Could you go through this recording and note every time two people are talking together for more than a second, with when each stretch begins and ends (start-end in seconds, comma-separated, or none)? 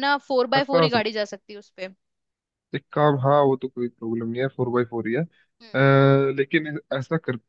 none